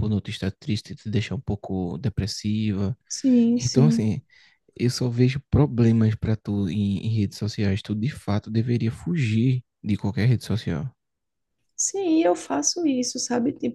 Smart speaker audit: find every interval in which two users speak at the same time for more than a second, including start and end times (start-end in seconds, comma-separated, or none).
none